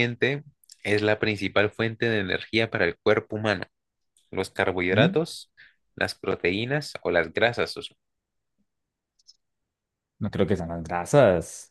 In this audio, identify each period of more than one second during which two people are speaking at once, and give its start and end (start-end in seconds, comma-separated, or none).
none